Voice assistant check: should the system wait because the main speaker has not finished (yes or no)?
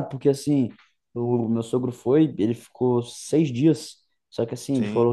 yes